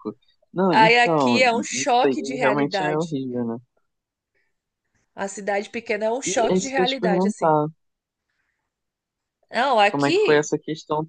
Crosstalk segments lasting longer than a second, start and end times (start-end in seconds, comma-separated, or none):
0.7-3.1, 6.2-7.5